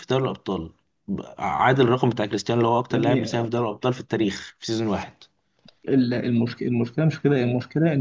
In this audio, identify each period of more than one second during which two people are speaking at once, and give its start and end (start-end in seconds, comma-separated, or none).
none